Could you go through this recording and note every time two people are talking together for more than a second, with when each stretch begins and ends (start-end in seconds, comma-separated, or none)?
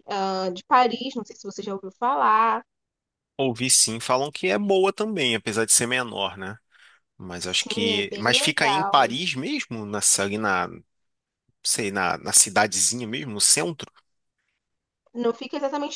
7.3-9.2